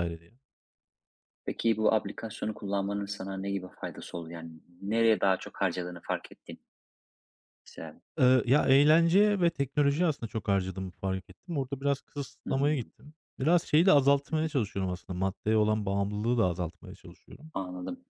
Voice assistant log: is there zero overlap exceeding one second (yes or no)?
yes